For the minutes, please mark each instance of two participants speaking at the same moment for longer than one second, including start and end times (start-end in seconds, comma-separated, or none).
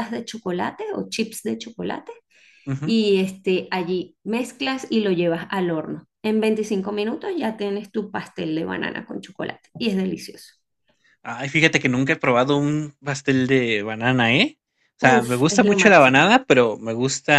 15.0-16.3